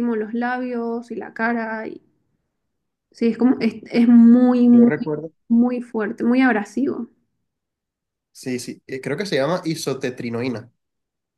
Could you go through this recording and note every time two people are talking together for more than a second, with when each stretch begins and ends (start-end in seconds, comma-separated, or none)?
none